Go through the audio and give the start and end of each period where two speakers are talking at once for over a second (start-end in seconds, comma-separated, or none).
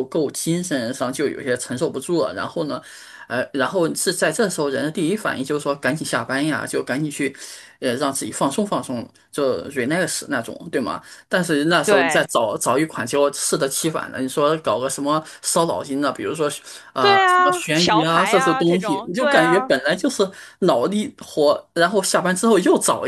17.0-19.7